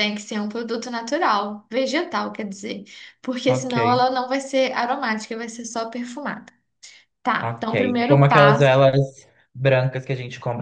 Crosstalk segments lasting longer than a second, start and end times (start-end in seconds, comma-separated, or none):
7.4-8.7